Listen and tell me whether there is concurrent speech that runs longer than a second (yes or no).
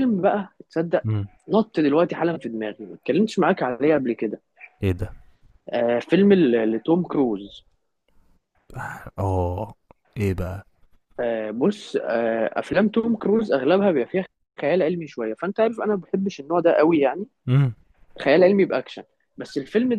no